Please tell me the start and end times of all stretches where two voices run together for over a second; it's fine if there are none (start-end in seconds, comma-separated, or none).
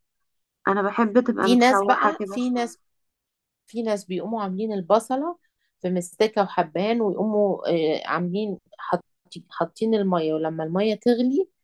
1.4-2.7